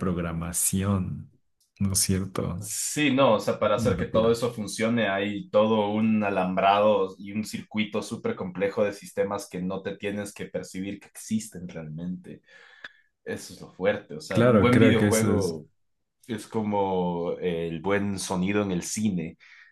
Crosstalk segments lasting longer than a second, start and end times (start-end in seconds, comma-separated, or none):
14.3-15.5